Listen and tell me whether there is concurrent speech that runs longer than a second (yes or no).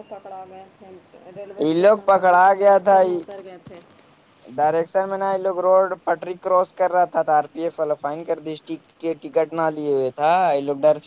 yes